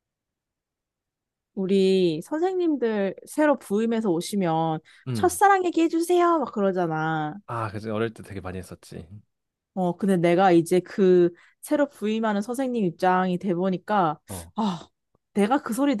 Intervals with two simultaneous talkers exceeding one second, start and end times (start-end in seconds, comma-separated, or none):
none